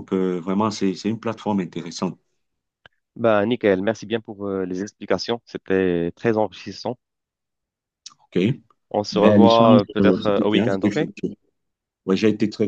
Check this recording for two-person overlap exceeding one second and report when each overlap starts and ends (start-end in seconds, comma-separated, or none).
9.1-11.0